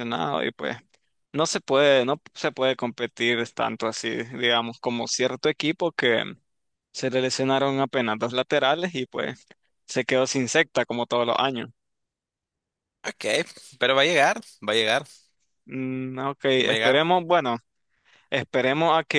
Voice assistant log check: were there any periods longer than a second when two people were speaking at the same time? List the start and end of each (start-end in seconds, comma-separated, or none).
none